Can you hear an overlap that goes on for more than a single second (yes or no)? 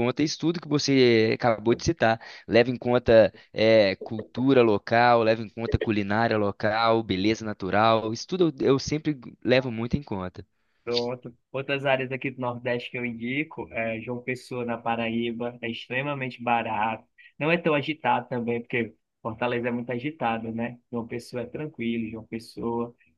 no